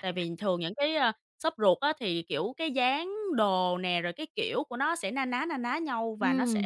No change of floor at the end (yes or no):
no